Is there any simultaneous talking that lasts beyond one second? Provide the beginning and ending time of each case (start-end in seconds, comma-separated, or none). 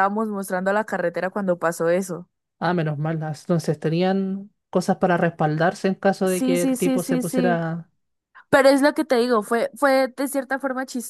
6.2-7.7